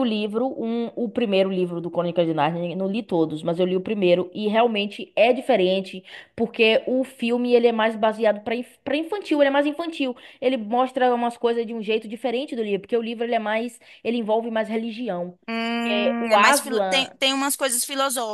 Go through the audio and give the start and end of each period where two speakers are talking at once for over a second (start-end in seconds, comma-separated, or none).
15.8-17.1